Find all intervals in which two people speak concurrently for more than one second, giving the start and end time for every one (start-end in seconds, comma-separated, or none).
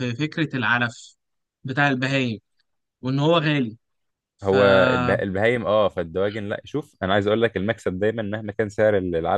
none